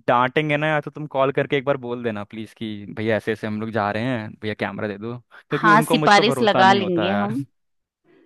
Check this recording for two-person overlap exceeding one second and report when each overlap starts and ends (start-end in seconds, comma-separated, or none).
5.5-7.3